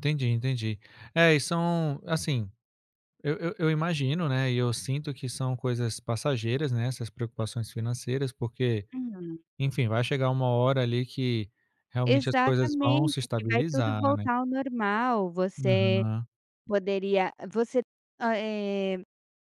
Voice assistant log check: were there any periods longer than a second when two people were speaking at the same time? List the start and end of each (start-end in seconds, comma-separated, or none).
12.1-14.2